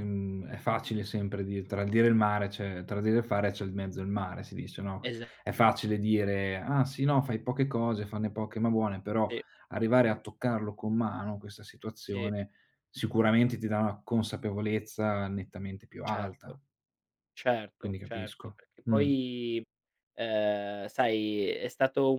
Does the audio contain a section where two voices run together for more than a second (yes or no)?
yes